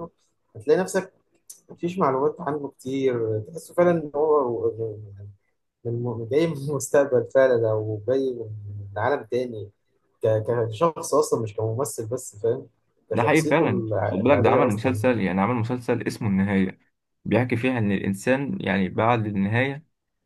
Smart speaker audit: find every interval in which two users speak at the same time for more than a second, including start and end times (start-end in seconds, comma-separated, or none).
13.1-15.0